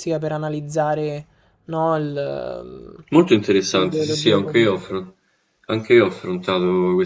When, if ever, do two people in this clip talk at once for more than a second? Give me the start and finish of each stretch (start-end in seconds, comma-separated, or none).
3.7-5.0